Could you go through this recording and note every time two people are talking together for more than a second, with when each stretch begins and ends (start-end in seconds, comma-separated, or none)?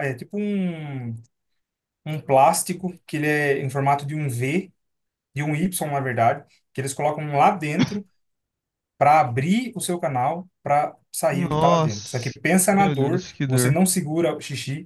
11.3-13.8